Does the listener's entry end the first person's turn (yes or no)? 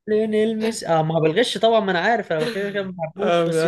yes